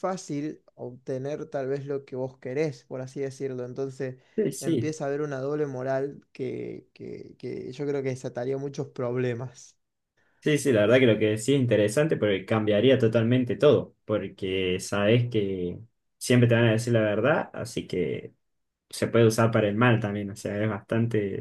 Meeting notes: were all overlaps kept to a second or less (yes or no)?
yes